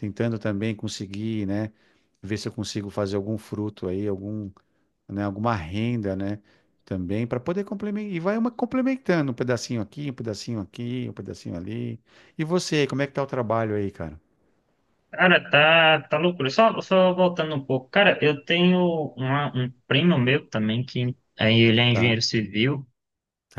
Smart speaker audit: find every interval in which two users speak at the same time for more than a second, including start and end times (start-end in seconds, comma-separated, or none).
none